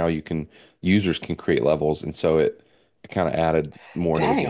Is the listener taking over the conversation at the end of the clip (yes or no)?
yes